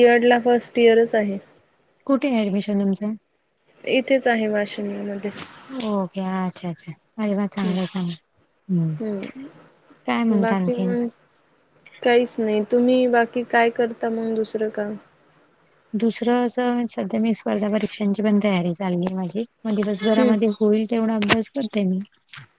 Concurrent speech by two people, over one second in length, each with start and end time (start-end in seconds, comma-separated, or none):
none